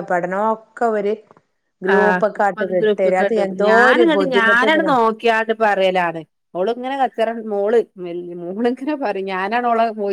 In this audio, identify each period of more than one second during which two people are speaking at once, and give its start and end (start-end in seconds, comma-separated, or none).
2.6-4.9